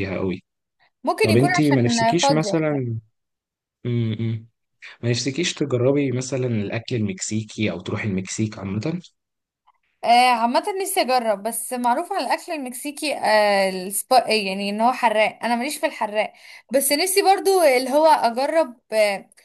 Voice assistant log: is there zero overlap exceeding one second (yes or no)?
no